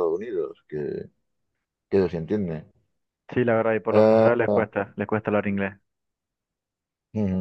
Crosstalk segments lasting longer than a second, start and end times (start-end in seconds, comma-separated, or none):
none